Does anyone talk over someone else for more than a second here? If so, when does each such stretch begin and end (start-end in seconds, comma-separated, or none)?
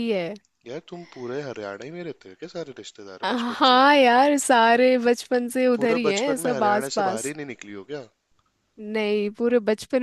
5.7-7.3